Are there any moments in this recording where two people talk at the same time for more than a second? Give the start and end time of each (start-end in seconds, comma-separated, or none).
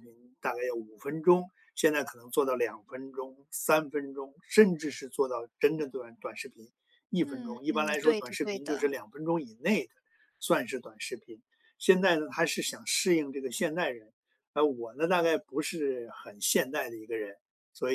7.2-8.9